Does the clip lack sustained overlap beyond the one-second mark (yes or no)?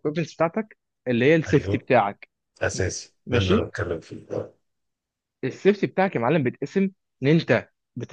yes